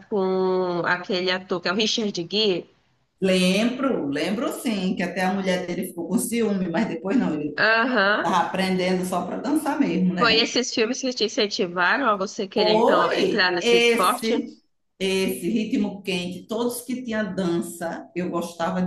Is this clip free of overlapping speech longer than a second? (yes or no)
no